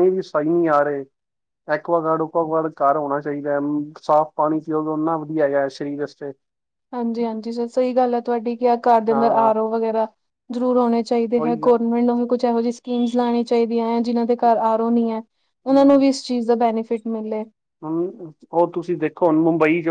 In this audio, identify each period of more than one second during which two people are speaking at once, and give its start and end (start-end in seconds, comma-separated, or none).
none